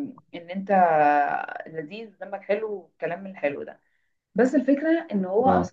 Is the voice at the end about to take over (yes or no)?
no